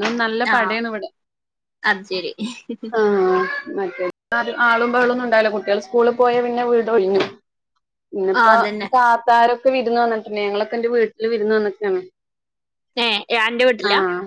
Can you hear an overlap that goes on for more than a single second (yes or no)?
no